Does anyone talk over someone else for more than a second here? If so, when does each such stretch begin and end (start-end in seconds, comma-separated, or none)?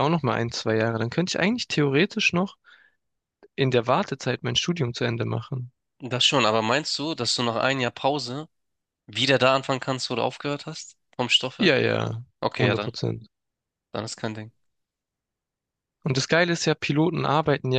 none